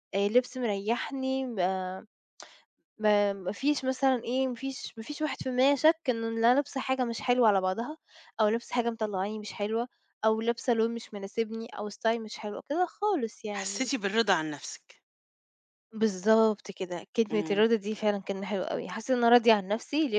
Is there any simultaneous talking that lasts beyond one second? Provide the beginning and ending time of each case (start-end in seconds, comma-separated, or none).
none